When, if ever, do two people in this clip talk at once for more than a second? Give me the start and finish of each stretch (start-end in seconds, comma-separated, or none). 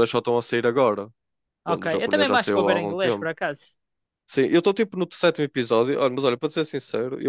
1.7-3.3